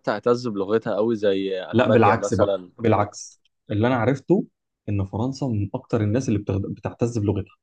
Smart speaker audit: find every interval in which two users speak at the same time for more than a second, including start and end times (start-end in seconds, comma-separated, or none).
1.7-3.1